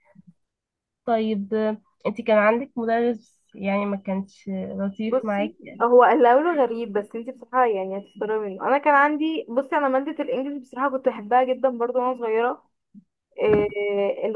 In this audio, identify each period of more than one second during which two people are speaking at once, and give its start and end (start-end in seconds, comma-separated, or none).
none